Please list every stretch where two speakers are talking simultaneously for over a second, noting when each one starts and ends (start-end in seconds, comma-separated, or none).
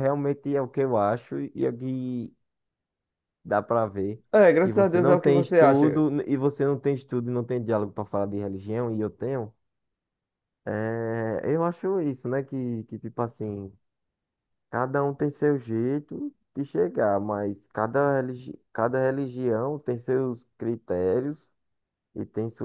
4.6-6.0